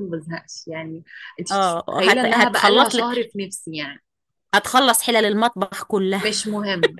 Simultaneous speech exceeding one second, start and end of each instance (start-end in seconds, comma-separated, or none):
1.5-3.3